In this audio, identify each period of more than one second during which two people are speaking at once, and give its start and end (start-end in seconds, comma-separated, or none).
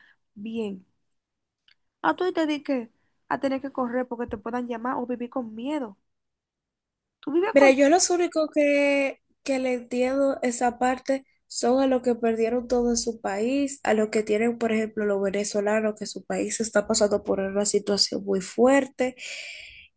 none